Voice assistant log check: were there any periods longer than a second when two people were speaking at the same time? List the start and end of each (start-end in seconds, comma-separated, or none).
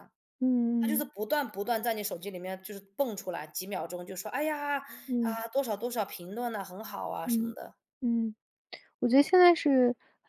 none